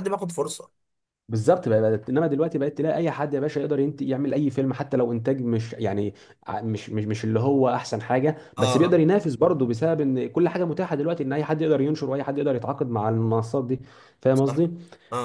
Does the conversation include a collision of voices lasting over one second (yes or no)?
no